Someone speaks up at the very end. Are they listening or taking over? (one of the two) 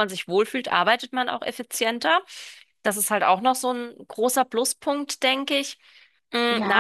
taking over